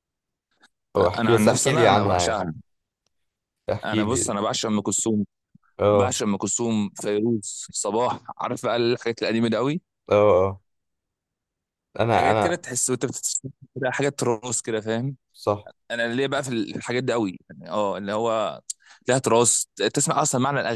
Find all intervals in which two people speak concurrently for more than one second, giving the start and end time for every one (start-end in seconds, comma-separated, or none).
1.2-2.4